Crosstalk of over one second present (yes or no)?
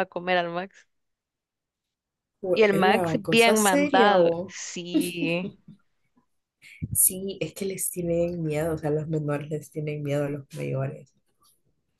yes